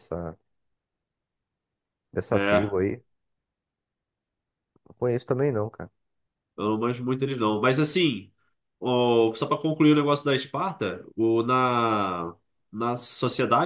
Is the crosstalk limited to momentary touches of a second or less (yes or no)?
yes